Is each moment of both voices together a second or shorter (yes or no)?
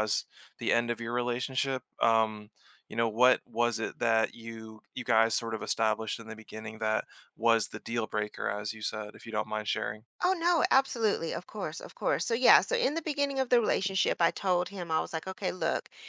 yes